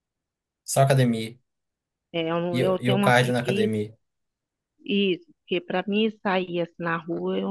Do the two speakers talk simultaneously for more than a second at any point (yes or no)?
yes